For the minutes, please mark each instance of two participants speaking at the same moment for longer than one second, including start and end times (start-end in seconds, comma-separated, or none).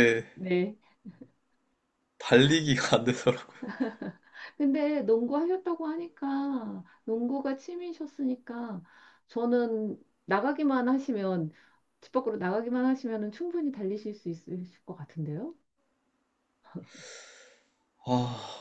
none